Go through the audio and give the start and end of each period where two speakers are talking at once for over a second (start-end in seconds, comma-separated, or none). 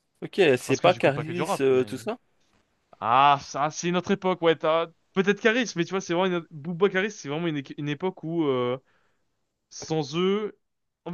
0.7-2.0